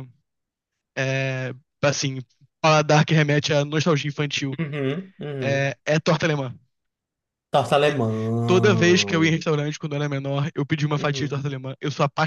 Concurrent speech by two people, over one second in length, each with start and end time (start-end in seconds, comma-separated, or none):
none